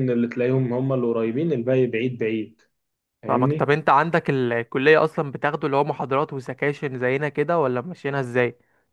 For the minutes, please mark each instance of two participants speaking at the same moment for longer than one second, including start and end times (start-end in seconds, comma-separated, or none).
none